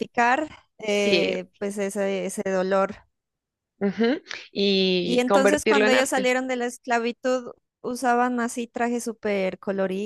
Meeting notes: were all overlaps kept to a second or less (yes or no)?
no